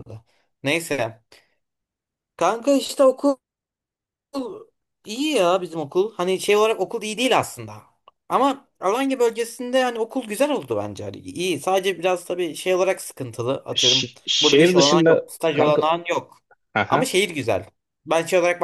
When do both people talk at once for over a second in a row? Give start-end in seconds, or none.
13.8-15.8